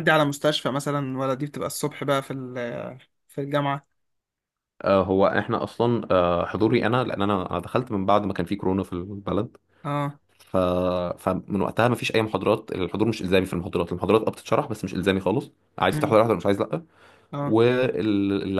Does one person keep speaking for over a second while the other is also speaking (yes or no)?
no